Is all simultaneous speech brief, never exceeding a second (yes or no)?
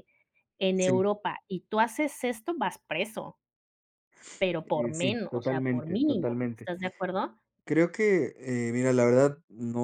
no